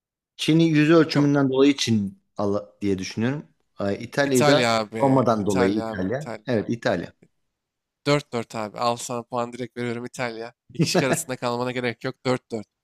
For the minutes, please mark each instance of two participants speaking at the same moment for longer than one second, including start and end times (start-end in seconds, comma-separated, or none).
4.2-6.5